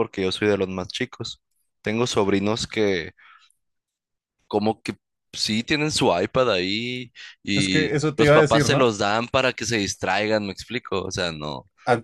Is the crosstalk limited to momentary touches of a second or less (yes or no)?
no